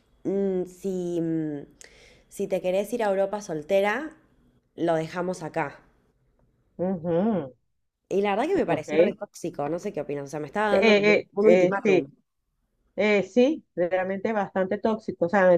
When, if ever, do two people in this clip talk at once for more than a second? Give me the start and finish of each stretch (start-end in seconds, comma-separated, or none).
10.7-12.1